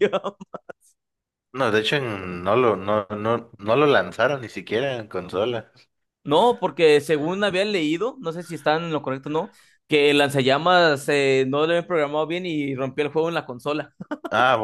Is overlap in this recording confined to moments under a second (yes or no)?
yes